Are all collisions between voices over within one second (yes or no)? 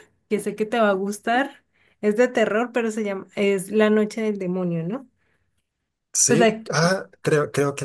yes